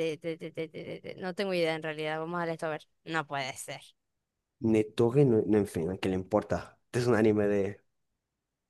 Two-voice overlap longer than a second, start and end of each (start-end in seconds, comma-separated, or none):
none